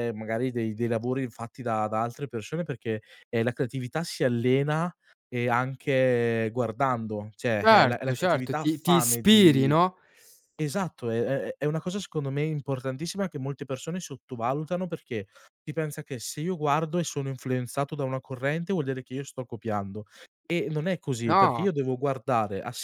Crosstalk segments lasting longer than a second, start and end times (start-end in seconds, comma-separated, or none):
7.6-9.7